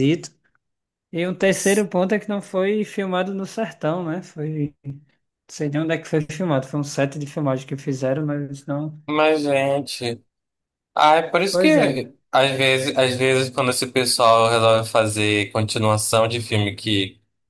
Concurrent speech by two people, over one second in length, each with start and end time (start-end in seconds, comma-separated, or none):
none